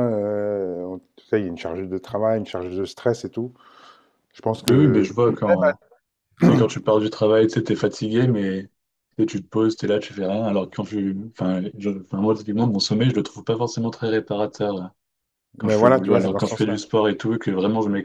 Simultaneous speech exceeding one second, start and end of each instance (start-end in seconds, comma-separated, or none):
15.6-16.8